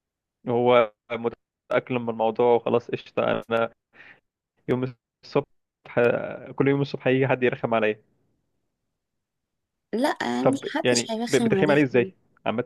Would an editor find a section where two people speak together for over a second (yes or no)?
yes